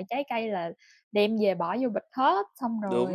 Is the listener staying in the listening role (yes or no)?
no